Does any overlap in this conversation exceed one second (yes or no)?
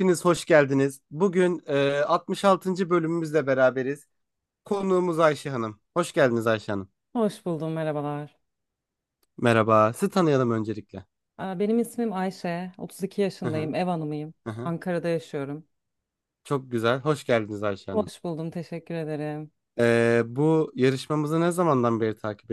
no